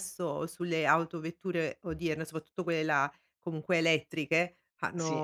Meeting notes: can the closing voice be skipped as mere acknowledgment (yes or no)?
yes